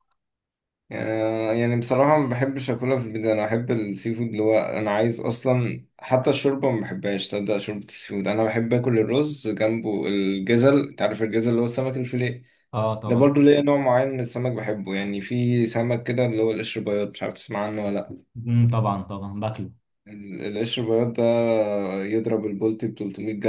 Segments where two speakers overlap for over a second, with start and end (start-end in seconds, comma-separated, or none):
none